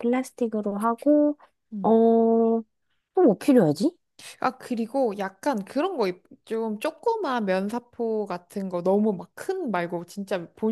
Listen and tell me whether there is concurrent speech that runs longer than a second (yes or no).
no